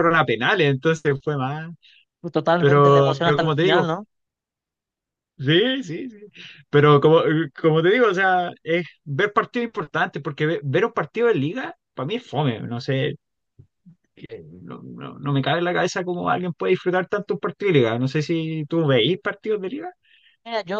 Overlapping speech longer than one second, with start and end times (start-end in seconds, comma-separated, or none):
2.6-3.9